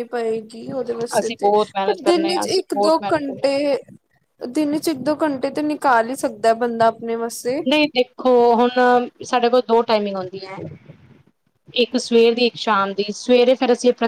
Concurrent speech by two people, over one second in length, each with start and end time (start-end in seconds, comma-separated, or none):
1.2-3.5